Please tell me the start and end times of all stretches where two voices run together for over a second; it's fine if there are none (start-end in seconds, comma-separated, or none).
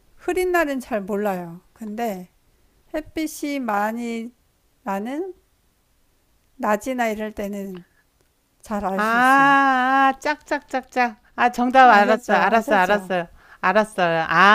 11.8-13.1